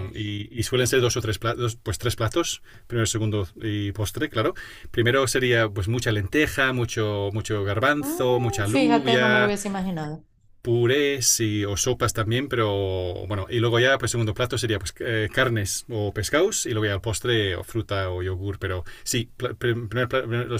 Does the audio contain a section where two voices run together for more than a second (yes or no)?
yes